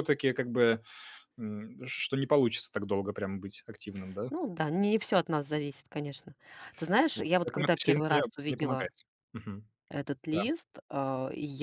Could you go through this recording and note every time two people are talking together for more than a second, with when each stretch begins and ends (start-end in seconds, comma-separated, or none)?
7.1-8.9